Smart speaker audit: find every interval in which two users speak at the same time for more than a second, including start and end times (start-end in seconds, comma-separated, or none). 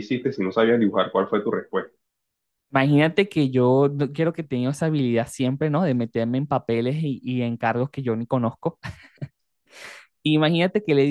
none